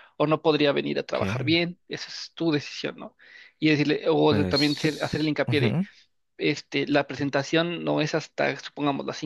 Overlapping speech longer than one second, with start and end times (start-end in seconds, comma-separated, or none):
4.3-5.8